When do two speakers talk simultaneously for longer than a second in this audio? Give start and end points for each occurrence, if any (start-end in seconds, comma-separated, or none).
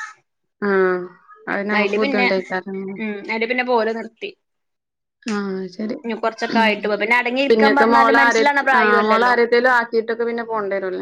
7.5-9.3